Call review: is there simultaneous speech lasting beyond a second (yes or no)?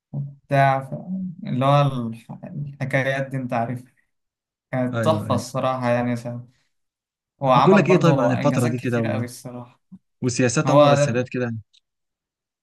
yes